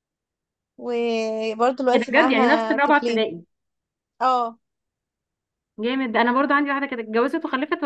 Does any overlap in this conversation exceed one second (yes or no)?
yes